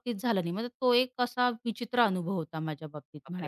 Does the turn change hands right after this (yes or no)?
yes